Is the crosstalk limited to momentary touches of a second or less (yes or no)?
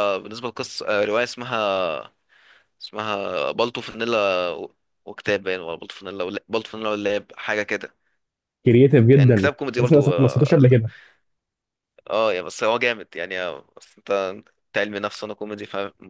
no